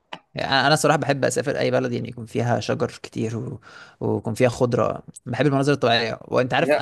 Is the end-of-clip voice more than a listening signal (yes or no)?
no